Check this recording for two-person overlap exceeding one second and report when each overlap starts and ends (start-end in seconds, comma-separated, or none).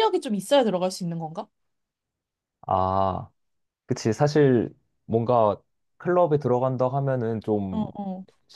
none